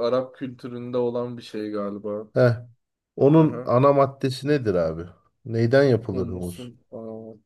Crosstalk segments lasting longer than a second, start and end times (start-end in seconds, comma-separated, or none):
none